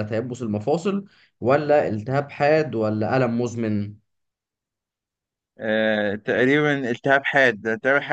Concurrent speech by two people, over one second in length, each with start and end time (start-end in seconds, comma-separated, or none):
none